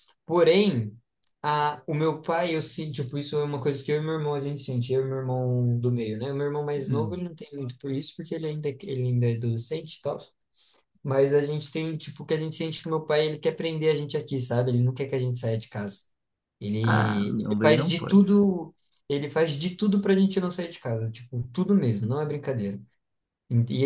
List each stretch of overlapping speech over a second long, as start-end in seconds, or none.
16.8-18.2